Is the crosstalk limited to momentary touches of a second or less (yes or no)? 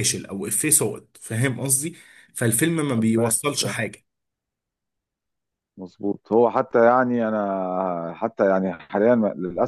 yes